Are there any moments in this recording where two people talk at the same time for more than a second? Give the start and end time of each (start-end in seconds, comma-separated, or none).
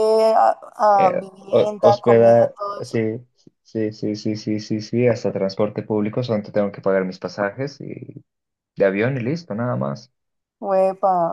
1.1-3.0